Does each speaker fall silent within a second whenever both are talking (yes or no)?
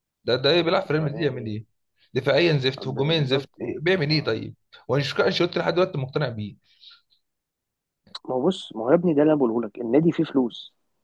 no